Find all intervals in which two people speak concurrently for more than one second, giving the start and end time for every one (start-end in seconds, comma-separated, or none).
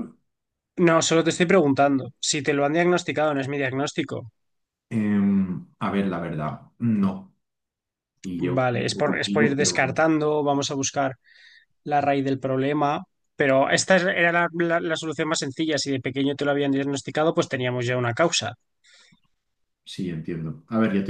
8.6-10.0